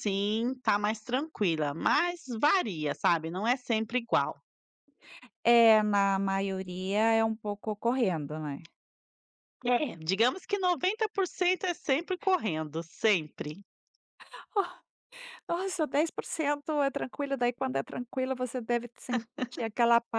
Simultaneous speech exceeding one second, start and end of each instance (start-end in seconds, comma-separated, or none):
none